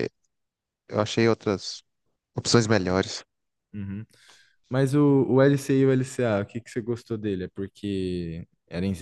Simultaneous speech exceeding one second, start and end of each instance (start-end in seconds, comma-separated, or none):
none